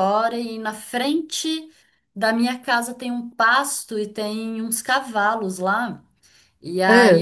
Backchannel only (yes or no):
yes